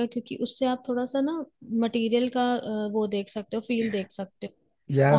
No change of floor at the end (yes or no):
no